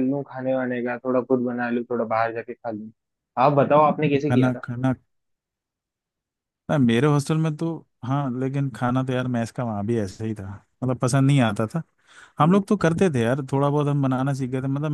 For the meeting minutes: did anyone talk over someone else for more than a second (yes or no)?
no